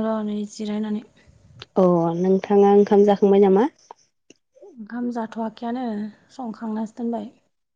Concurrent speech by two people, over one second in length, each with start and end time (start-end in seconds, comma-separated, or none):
none